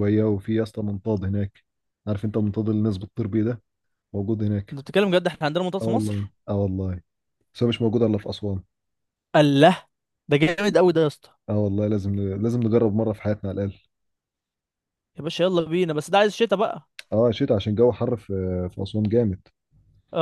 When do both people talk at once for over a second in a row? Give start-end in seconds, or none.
none